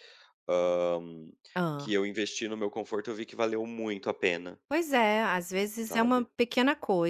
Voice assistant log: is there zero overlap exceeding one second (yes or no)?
yes